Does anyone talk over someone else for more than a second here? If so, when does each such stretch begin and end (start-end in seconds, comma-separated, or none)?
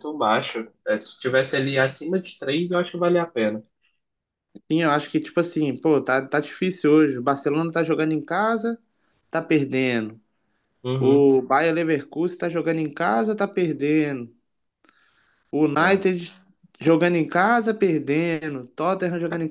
none